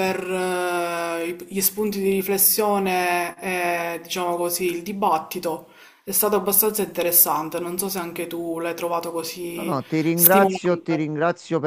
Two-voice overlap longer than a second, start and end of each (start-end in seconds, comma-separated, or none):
9.6-11.1